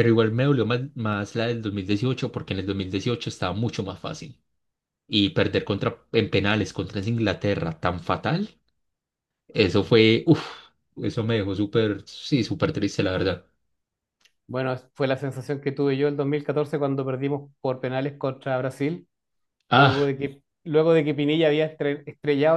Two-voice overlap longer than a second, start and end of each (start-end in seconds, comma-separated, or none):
none